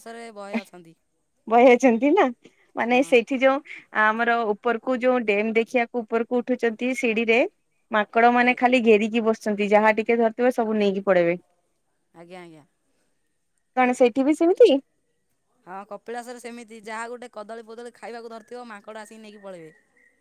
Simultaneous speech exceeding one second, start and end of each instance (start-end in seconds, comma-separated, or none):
none